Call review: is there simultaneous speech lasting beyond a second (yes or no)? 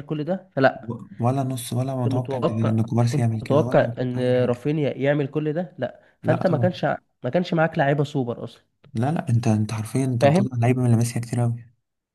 yes